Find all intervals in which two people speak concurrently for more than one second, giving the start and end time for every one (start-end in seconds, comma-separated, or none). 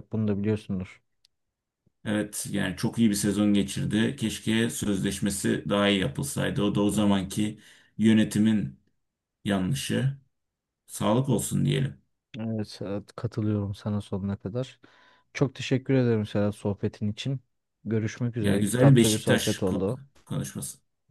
18.4-20.0